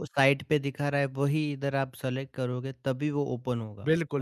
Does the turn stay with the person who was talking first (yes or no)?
no